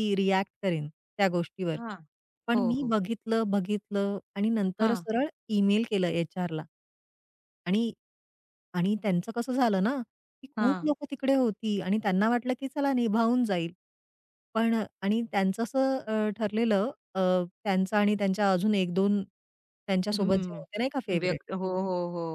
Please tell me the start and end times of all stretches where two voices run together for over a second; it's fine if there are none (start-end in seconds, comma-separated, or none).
20.1-21.4